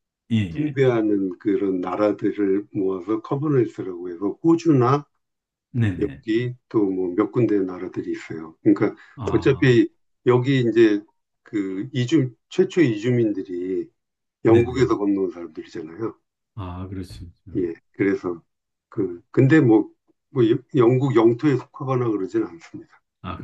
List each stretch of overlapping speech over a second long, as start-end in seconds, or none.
none